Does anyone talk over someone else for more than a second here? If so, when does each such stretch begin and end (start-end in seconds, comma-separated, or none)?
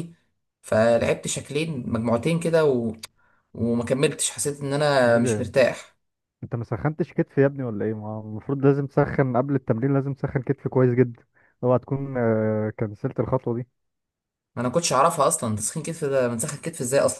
none